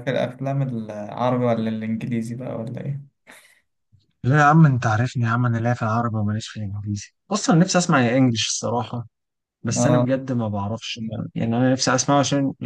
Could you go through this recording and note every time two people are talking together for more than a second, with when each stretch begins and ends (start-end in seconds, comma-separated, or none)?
none